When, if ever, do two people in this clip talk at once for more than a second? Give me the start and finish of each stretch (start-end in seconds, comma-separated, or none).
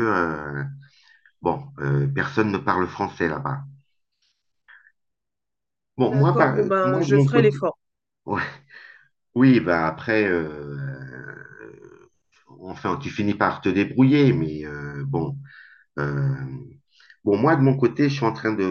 6.0-7.6